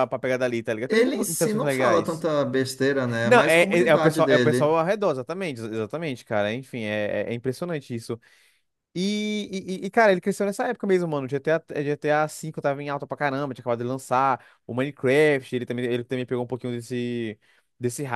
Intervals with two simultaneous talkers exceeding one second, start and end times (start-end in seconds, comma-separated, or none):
0.9-2.3, 3.2-4.8